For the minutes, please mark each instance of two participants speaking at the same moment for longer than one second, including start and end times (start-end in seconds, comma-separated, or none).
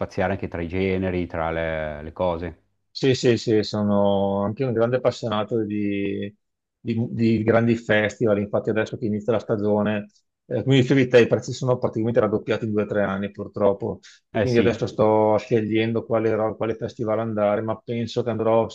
none